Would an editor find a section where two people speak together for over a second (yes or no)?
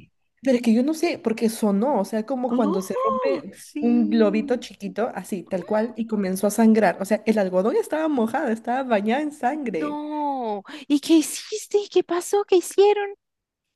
yes